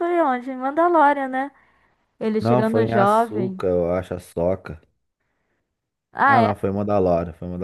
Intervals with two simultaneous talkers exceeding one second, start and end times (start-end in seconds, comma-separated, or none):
2.4-3.6